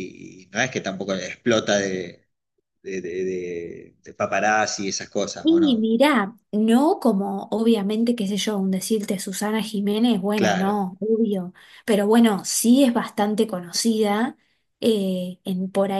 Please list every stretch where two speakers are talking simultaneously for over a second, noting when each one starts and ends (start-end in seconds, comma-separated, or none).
none